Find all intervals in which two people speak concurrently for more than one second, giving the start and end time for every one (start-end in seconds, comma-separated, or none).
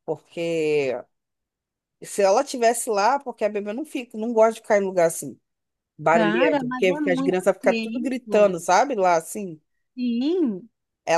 6.1-8.6